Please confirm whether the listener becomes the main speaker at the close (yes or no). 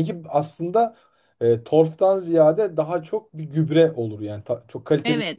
yes